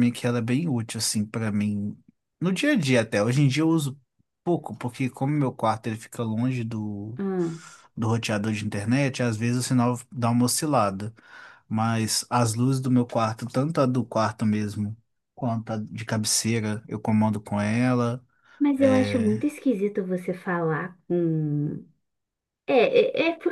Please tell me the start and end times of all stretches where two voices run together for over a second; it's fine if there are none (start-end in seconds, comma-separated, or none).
none